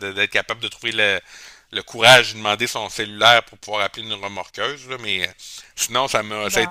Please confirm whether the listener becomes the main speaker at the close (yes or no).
no